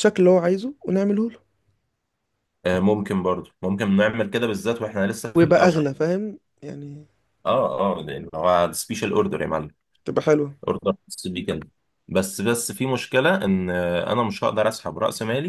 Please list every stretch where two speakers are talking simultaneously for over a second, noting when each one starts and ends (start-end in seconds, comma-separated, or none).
none